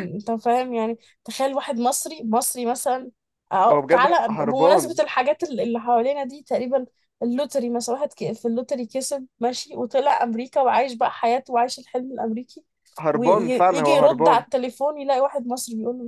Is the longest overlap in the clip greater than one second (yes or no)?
yes